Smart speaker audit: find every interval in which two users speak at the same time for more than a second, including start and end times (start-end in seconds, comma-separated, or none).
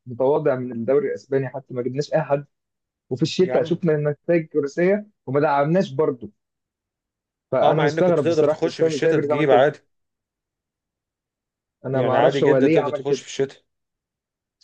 7.6-9.7, 11.9-13.2